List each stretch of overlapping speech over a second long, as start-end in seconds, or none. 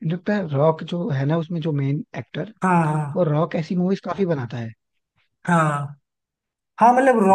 none